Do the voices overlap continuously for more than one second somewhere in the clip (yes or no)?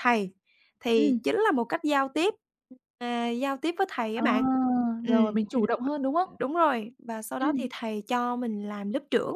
no